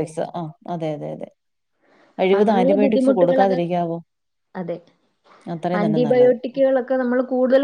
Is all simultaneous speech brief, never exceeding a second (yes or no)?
no